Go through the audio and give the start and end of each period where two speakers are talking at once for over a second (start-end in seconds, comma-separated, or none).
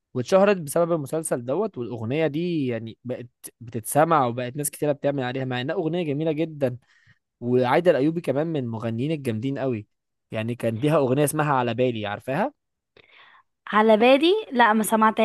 none